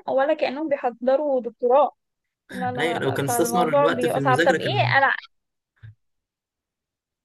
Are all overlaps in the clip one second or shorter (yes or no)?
no